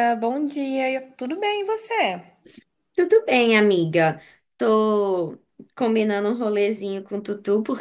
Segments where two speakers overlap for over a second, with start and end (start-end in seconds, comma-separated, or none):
none